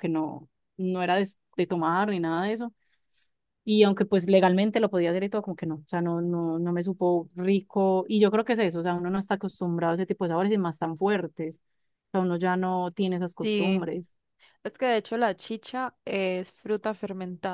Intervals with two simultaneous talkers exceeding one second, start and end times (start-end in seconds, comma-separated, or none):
none